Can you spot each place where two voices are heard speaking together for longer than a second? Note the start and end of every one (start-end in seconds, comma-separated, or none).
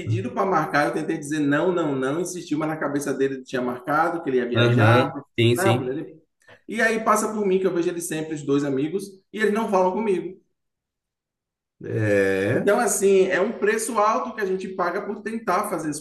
4.5-5.9